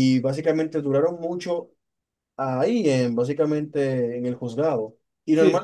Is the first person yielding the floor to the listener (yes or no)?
no